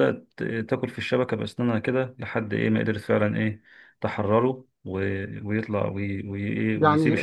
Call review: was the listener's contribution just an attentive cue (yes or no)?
no